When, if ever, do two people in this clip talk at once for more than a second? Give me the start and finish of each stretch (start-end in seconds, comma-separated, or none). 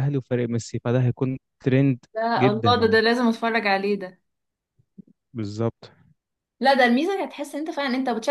none